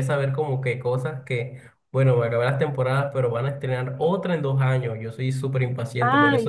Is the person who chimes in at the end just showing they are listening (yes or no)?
yes